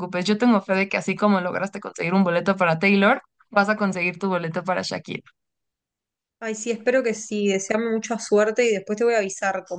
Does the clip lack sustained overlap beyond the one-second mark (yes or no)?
yes